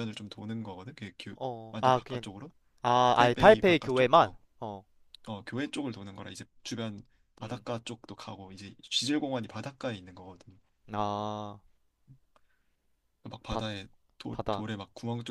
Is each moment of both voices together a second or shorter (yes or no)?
no